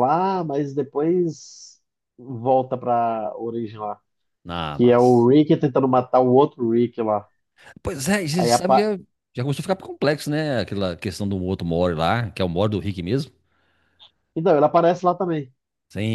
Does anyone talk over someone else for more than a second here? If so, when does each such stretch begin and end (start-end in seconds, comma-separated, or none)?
none